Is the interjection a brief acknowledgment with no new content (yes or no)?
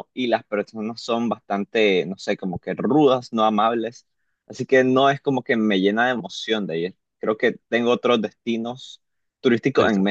no